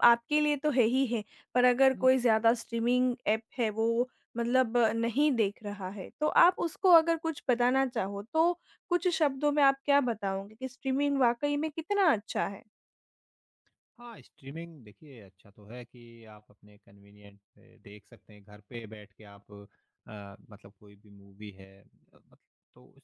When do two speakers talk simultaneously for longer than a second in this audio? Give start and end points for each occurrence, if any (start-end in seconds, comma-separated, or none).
none